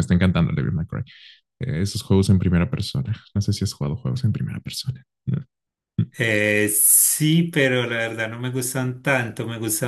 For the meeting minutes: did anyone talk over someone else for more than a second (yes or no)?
no